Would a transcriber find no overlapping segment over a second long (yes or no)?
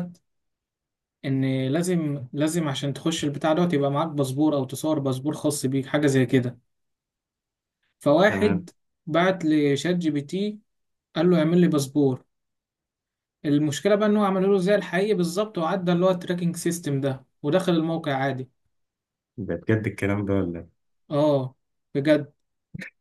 yes